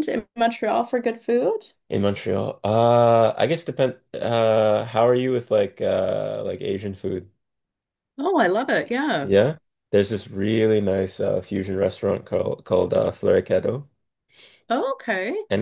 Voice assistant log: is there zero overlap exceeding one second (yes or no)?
yes